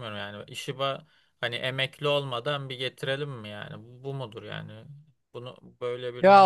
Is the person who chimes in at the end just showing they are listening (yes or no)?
no